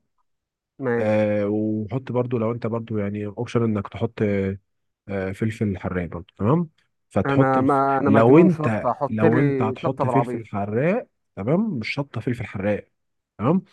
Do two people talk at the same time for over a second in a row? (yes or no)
yes